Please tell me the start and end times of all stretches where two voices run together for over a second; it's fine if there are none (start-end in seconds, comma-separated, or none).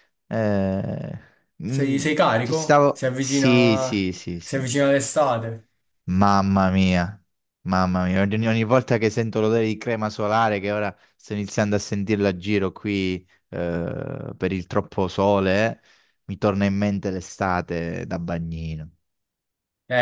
1.7-4.6